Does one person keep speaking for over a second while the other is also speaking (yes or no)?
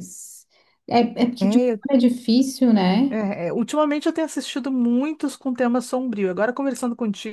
no